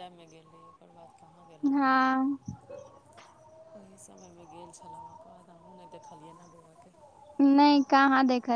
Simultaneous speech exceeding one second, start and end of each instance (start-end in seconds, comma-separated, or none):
none